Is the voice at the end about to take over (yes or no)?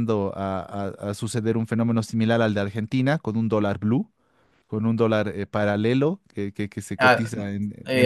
yes